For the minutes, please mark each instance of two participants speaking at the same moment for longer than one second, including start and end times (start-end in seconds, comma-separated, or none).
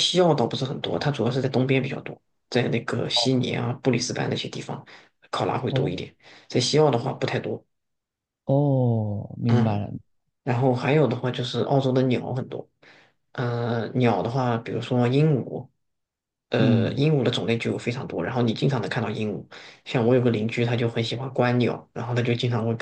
none